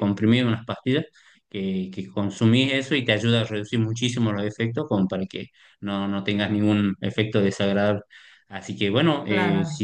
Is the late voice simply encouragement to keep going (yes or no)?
yes